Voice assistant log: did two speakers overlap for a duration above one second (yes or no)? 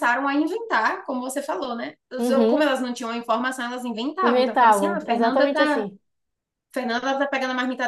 yes